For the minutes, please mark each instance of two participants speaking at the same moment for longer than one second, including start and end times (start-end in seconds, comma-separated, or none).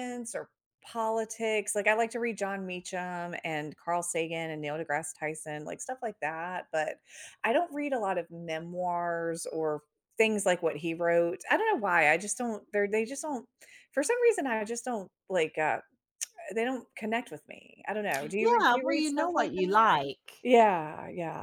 18.2-19.8